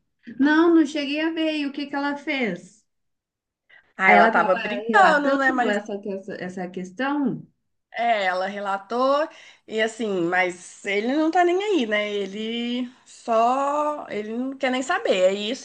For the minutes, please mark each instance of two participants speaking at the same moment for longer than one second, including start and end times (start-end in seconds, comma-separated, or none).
4.1-5.8